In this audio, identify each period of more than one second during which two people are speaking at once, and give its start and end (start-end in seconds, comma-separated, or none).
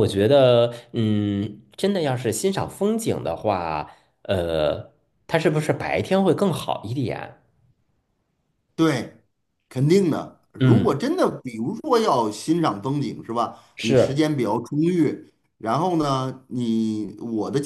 none